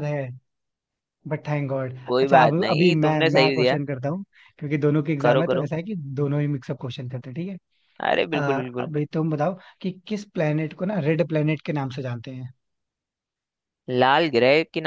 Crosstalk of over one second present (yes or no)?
yes